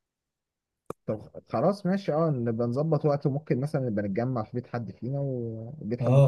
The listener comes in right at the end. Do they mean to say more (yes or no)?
yes